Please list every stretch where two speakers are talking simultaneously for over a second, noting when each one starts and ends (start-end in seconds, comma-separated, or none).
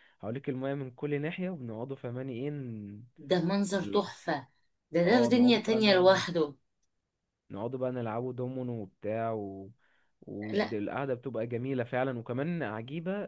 5.0-6.3